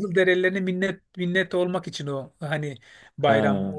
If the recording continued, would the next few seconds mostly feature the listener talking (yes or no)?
no